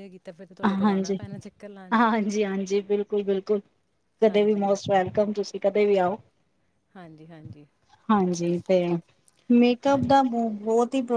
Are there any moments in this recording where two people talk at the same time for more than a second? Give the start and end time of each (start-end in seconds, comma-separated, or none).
none